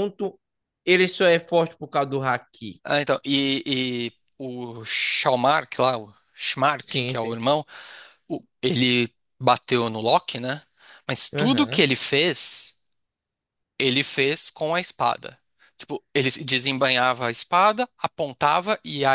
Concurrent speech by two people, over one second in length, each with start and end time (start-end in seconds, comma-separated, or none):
none